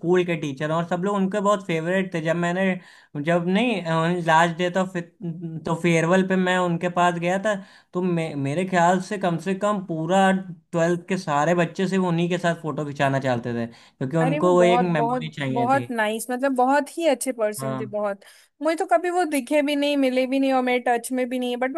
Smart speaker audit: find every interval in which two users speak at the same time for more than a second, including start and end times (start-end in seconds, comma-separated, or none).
14.2-15.9